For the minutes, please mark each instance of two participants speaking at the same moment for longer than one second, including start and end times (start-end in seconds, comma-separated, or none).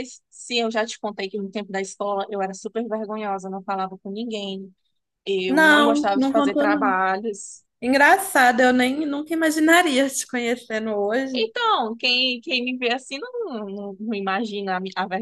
5.5-7.0